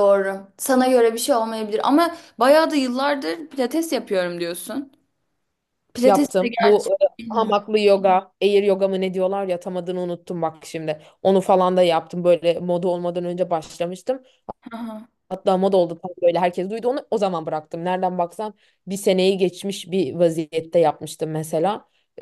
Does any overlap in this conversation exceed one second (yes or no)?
yes